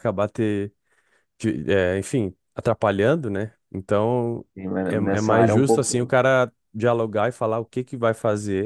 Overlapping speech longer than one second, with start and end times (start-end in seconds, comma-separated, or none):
4.8-6.1